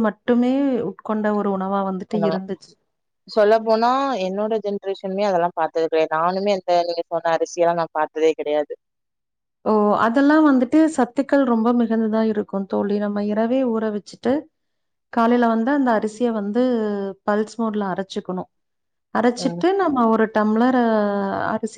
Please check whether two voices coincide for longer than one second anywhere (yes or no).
no